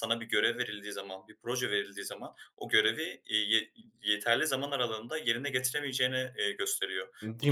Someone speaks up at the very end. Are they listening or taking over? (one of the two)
listening